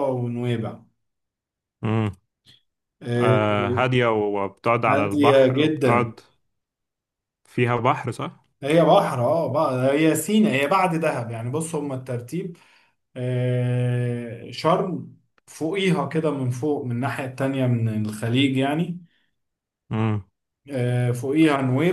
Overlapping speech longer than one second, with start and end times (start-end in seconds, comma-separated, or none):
4.9-6.1